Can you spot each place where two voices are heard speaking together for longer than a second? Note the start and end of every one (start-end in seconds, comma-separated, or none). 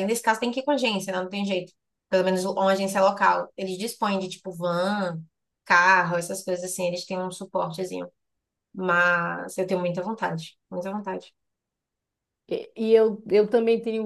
none